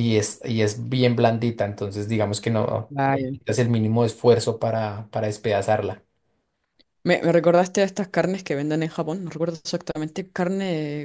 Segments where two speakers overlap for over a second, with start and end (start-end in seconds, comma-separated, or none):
none